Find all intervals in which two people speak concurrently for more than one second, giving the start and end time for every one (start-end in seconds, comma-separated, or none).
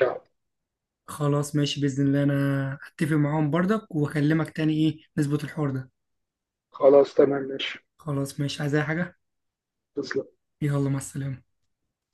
none